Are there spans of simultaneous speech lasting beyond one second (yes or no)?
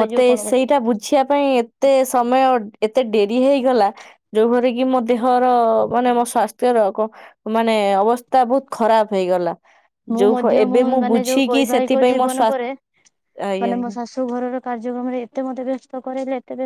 yes